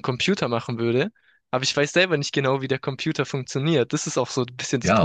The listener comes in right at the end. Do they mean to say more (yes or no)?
yes